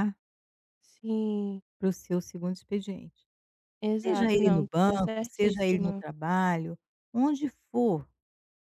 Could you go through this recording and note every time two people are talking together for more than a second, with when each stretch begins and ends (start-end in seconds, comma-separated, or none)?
4.0-6.0